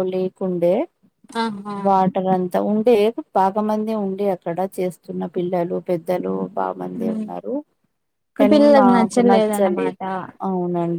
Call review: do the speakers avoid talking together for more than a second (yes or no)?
no